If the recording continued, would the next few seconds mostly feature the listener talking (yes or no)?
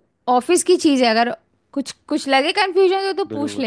yes